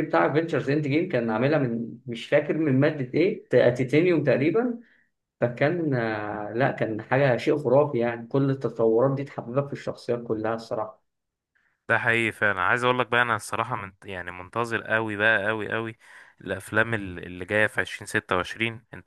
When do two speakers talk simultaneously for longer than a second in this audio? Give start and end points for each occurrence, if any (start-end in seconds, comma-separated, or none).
none